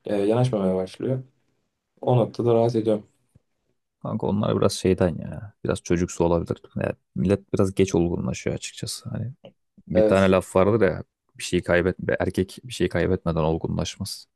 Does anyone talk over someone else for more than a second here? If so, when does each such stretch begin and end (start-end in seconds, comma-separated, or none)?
none